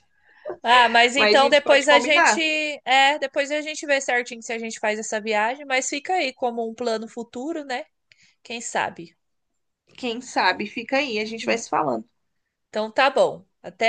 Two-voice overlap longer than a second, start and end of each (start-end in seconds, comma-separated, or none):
1.1-2.4